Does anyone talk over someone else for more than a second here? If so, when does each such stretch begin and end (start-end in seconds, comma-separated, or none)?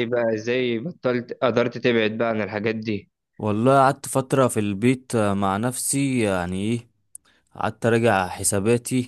none